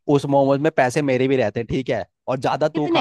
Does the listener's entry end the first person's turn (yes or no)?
no